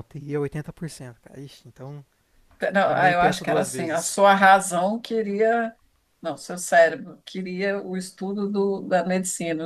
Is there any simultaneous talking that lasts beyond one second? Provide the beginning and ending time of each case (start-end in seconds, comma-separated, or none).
2.9-4.2